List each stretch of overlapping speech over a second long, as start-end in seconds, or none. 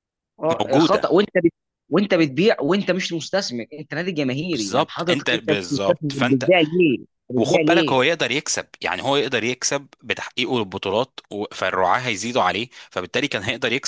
4.5-6.5